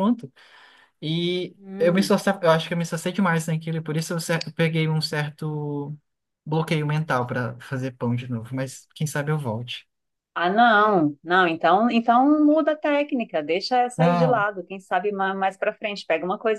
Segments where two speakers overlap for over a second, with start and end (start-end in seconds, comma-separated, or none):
none